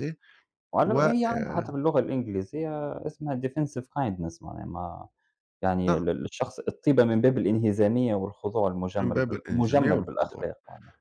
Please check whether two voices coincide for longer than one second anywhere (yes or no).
yes